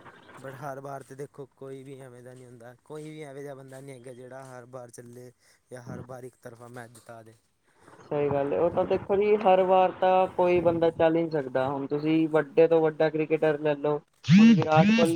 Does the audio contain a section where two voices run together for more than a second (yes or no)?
no